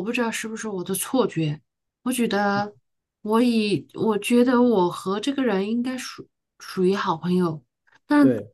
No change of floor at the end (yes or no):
yes